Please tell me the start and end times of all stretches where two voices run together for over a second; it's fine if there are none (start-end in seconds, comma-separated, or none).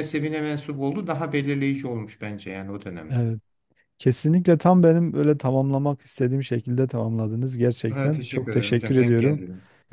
7.9-9.4